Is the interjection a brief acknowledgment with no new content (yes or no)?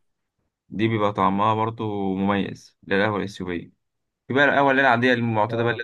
yes